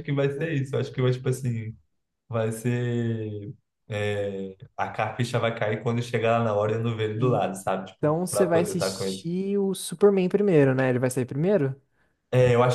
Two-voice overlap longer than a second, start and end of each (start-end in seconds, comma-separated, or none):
8.0-9.2